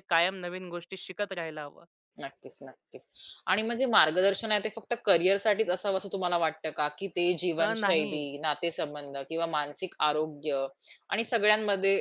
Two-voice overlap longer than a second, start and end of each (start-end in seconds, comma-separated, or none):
none